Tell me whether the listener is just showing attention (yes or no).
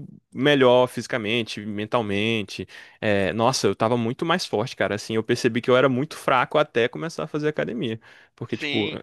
yes